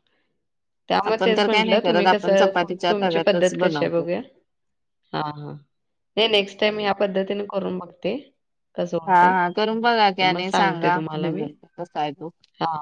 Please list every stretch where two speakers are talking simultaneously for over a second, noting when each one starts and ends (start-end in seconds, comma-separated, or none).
1.1-4.0